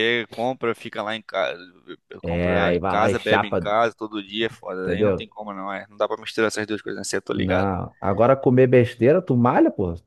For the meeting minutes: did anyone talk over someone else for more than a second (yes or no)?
yes